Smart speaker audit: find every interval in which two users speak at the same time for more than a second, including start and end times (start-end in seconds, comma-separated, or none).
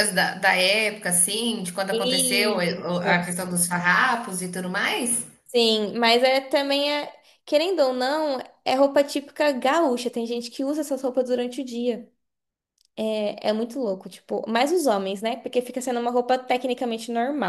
1.9-3.2